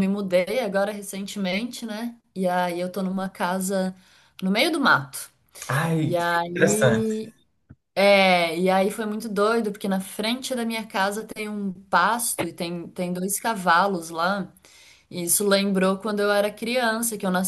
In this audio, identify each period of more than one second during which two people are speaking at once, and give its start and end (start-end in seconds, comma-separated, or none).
6.0-7.2